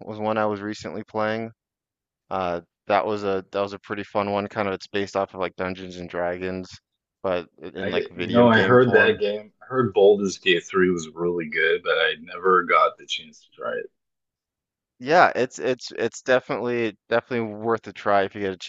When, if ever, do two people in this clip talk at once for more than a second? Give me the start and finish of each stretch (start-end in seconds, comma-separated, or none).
7.8-9.2